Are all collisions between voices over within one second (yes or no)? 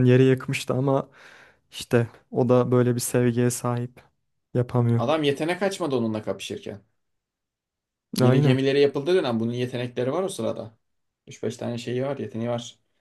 yes